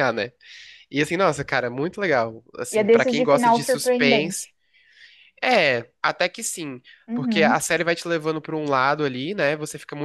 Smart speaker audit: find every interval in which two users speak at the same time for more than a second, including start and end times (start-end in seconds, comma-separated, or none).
2.7-4.5